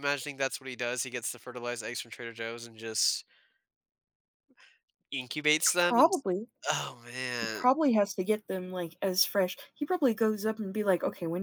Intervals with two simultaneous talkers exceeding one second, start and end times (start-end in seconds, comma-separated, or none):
none